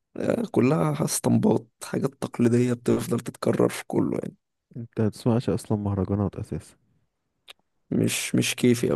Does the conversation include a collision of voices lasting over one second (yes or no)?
no